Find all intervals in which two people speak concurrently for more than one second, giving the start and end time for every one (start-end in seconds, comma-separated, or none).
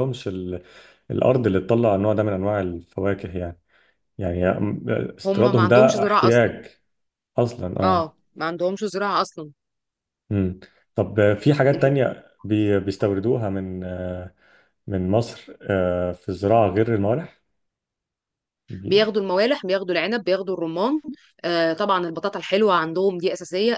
5.2-6.5